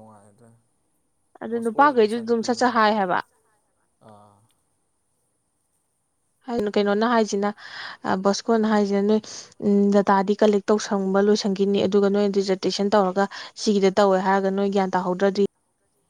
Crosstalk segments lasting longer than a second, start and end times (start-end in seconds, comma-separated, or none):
1.5-2.9